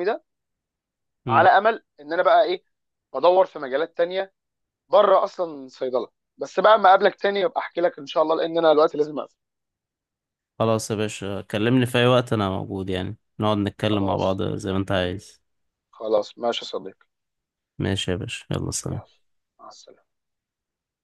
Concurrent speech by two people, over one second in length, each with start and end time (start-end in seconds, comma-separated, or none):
none